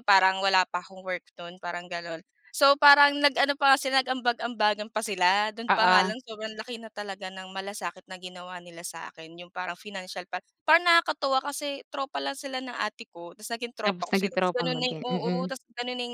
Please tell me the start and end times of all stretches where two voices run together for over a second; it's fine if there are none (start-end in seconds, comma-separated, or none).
13.9-15.5